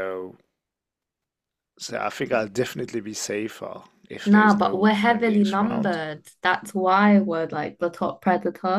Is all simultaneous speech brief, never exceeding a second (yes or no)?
no